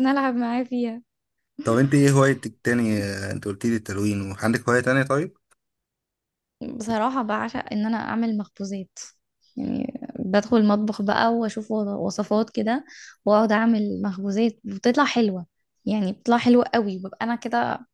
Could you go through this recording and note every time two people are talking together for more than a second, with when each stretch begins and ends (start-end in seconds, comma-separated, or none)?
none